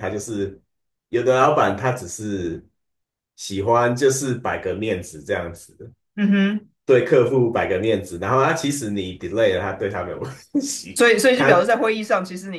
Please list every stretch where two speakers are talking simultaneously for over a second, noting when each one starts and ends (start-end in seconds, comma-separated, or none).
none